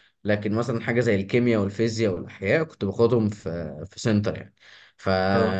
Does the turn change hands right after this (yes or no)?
no